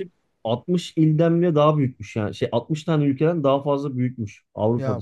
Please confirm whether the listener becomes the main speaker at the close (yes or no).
no